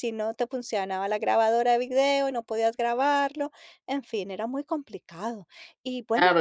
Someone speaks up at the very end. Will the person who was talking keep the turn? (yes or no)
no